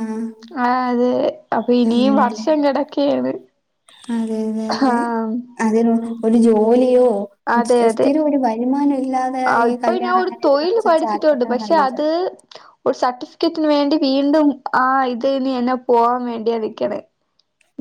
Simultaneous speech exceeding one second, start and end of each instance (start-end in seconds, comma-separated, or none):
9.7-12.0